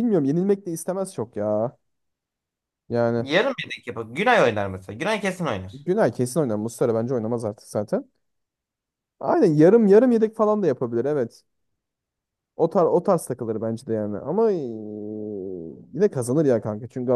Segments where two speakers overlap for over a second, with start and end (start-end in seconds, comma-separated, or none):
none